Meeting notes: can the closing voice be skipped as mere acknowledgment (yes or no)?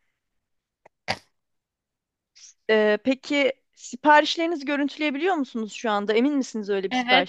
no